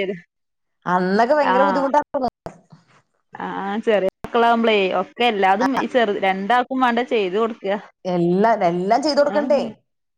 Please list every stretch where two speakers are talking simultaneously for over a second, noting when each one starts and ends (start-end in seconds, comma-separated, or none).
none